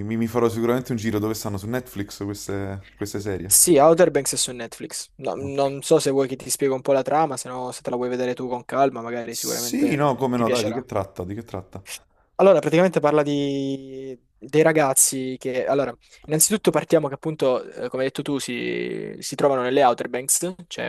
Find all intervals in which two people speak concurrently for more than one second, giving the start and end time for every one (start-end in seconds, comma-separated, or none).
9.3-10.8